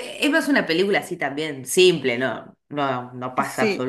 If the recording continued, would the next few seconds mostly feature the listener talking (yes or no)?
no